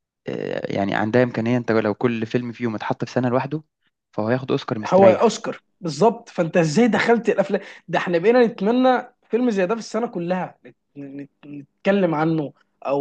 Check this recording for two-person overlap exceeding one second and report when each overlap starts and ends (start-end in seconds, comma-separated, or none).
none